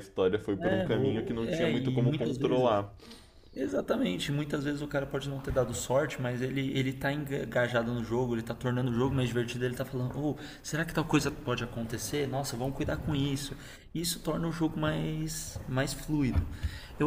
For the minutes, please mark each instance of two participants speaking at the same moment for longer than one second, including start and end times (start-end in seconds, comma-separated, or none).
0.6-2.9